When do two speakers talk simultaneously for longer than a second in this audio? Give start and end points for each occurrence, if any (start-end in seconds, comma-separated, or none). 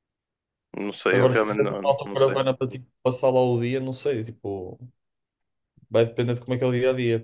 1.1-2.4